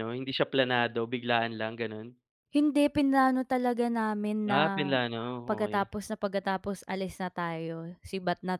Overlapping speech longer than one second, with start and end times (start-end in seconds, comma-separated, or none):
none